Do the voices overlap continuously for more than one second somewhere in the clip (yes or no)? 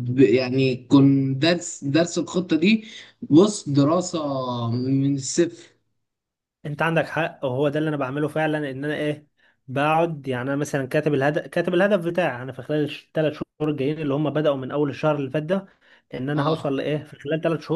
no